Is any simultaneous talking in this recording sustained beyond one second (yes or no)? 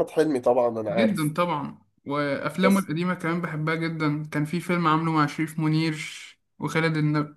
no